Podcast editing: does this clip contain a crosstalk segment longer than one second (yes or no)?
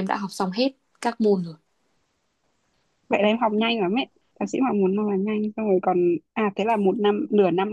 no